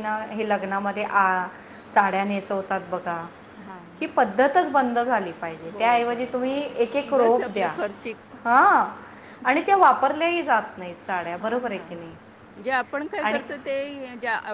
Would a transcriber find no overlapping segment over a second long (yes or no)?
no